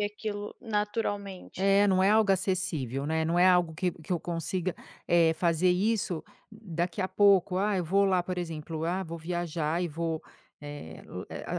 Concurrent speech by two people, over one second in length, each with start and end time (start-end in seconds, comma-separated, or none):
none